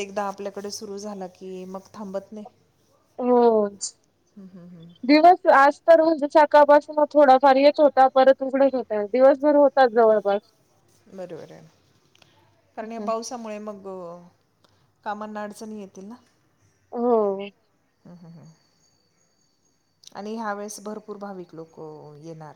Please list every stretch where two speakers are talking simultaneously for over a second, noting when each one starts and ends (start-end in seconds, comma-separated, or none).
none